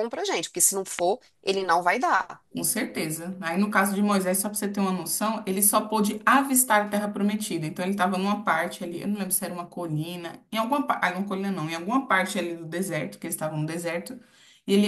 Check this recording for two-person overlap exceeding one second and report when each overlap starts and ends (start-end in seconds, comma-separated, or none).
none